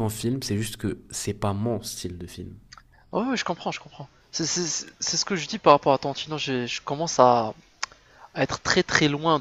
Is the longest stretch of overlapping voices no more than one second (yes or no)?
yes